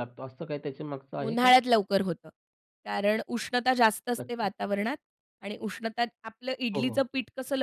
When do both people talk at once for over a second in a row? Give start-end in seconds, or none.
none